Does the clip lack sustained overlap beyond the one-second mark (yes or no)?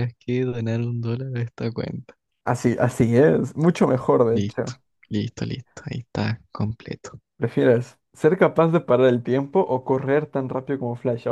yes